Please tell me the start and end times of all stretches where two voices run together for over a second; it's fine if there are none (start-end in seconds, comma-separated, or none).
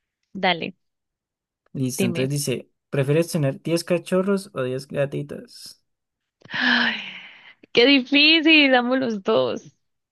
none